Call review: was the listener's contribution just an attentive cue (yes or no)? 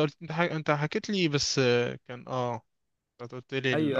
no